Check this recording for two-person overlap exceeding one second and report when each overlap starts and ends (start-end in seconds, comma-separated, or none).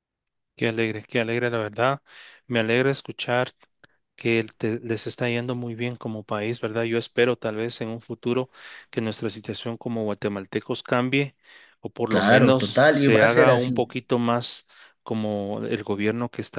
12.1-13.9